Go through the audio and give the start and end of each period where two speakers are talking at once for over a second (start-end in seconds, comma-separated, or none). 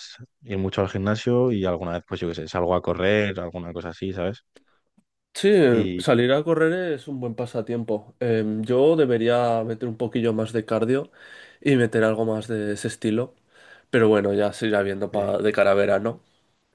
none